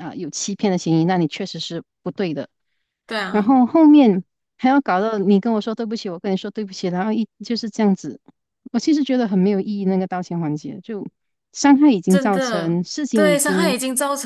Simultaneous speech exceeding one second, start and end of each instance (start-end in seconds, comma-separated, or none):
12.1-13.8